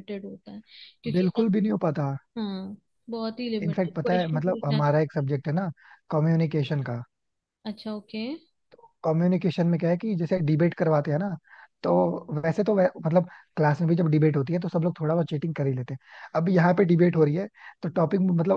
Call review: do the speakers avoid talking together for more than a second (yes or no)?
no